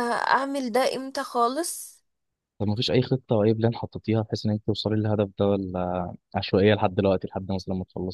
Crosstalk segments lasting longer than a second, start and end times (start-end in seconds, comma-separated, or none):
none